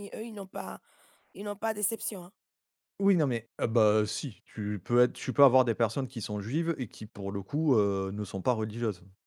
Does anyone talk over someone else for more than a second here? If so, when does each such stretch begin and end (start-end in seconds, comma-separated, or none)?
none